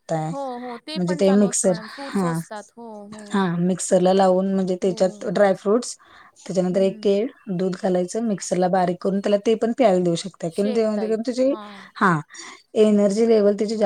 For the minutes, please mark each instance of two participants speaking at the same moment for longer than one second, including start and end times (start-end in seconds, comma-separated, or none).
0.9-2.4